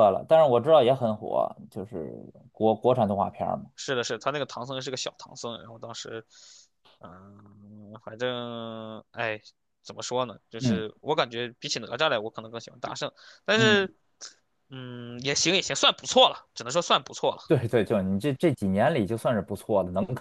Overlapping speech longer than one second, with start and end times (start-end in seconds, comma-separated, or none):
none